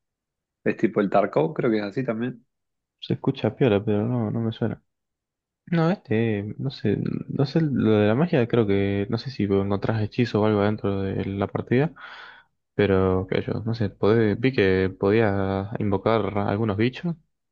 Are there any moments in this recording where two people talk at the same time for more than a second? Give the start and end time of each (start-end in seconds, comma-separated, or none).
none